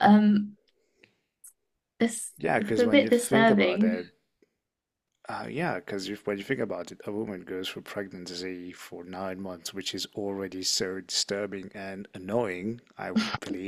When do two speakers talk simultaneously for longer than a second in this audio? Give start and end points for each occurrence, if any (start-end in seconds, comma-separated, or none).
2.4-4.0